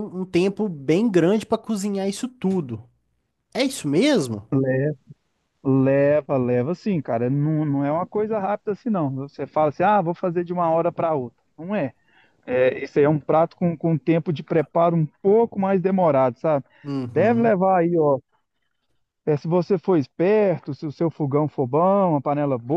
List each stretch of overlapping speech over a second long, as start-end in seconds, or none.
none